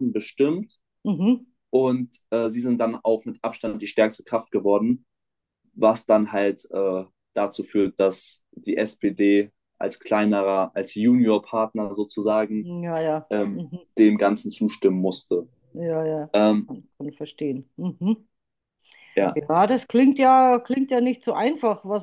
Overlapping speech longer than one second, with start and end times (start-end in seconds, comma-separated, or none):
none